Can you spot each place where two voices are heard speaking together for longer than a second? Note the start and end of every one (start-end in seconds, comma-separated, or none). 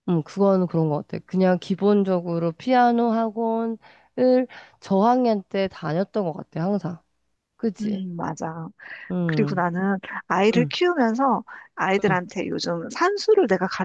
none